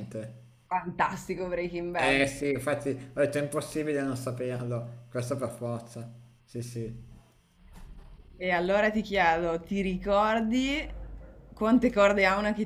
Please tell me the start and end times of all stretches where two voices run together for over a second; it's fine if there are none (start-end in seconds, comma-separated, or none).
none